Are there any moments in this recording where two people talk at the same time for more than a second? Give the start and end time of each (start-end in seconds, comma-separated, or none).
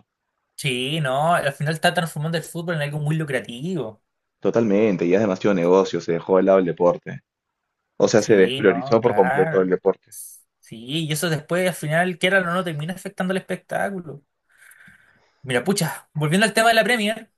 8.2-9.7